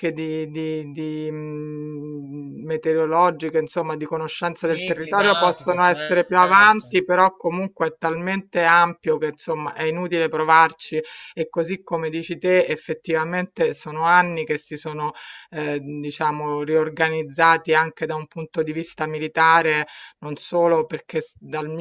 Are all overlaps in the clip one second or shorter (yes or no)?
no